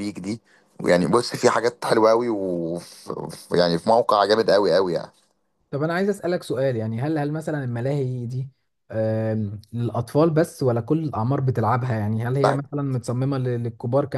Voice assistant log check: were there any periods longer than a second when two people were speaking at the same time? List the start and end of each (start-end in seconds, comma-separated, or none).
none